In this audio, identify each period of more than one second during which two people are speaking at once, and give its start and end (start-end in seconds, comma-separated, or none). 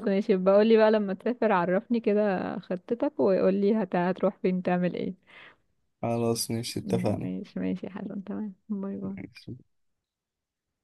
none